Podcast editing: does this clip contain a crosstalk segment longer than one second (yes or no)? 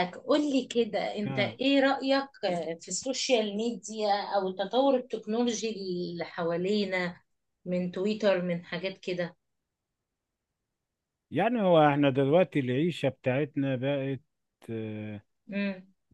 no